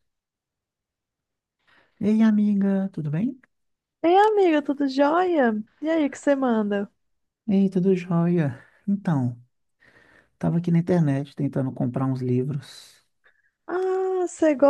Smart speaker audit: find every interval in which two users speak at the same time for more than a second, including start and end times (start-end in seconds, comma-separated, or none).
none